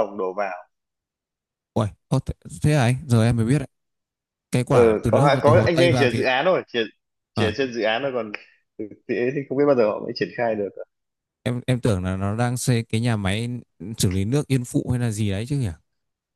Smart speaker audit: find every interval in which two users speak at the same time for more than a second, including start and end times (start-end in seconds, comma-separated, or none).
4.7-6.3